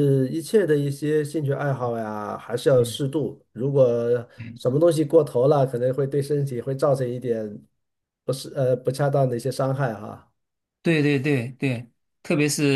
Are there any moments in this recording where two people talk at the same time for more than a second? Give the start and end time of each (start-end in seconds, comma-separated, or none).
none